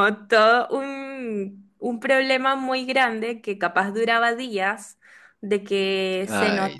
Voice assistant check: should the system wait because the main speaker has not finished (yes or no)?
yes